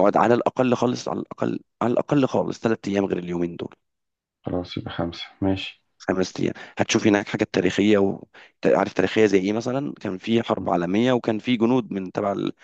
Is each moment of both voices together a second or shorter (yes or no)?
yes